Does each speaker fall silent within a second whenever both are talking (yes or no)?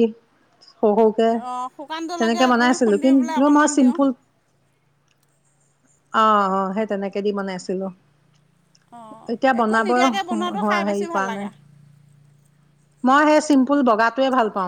no